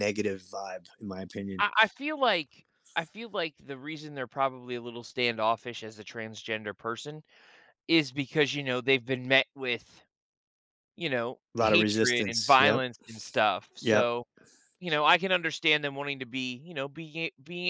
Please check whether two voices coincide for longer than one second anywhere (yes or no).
yes